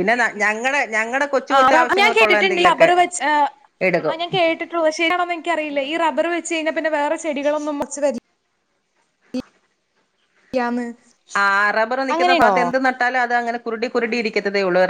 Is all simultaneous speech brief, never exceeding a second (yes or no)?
no